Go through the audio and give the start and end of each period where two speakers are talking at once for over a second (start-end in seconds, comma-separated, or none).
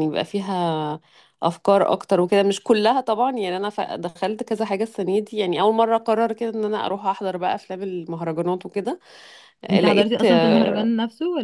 9.7-10.9